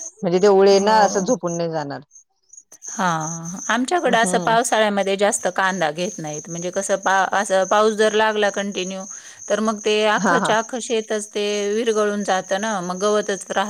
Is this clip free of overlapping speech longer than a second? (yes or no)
yes